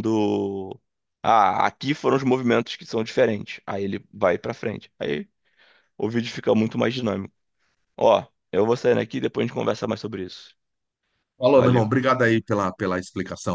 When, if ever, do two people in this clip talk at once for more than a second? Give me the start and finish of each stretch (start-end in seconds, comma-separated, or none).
none